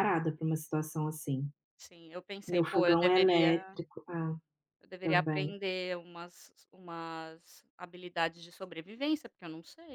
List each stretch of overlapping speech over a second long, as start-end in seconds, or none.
2.5-3.8